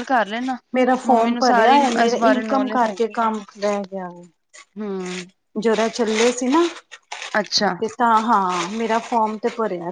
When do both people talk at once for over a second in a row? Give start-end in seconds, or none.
1.1-3.2